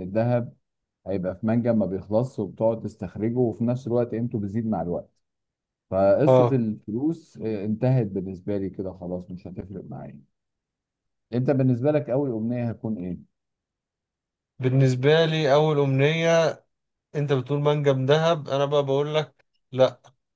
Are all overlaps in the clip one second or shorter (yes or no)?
yes